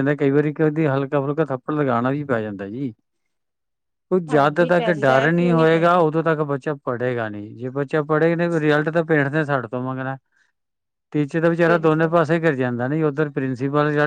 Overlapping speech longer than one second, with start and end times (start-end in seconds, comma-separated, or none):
4.3-6.0